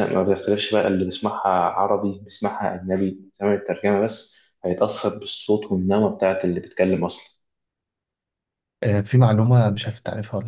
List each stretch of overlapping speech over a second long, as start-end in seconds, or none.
none